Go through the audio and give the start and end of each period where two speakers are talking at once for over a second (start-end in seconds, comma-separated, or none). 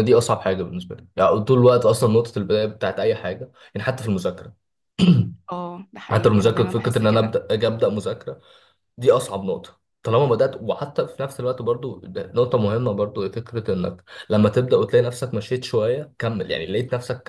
6.1-7.4